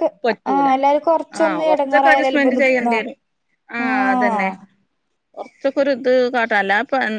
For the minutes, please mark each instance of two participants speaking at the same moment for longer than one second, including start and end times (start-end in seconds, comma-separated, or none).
1.4-3.2